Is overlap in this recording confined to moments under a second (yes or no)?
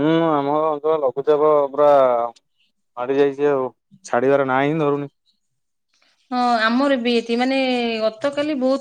yes